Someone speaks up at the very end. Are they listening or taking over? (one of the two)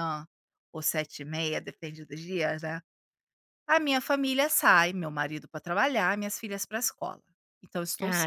taking over